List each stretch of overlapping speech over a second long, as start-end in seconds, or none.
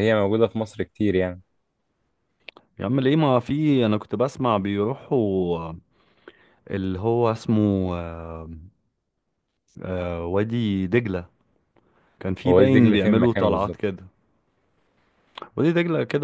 12.5-13.8